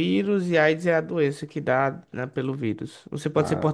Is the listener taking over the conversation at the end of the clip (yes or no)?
no